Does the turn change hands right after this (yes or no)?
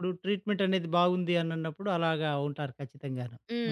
yes